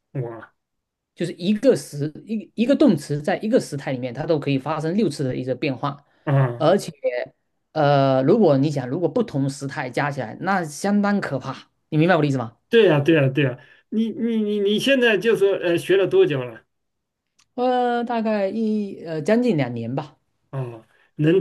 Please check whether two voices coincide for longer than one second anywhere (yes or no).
no